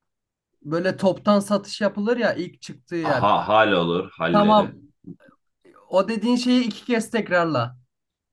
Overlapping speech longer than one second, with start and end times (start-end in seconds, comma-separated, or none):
none